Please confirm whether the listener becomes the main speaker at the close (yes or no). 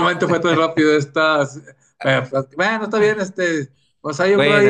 yes